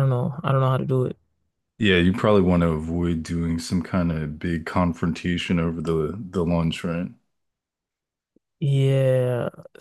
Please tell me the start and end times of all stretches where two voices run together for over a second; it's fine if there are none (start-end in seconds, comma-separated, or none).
none